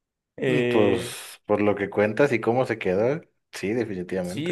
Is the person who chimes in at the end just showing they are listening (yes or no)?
no